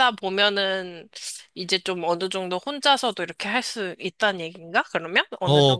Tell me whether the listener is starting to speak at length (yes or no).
yes